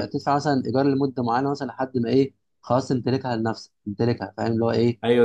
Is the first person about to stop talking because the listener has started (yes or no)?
yes